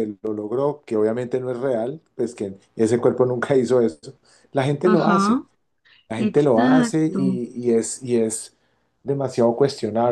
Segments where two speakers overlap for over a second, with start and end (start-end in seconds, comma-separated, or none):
6.2-7.4